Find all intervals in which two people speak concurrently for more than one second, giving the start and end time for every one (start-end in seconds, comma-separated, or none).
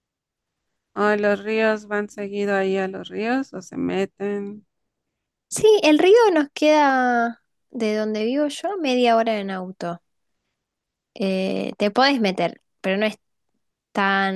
none